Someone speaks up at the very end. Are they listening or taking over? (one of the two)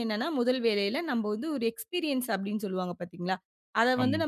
listening